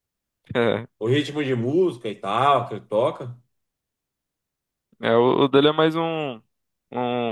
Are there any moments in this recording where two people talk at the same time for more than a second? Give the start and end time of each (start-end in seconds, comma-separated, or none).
none